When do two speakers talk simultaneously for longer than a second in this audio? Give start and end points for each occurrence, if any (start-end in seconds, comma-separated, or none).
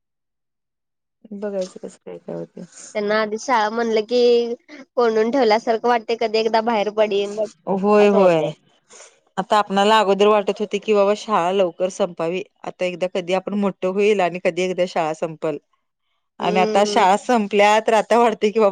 none